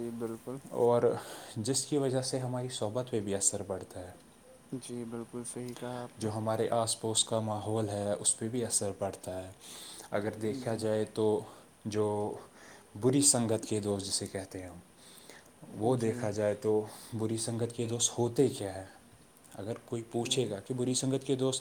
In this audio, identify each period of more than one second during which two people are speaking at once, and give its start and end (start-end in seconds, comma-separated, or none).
none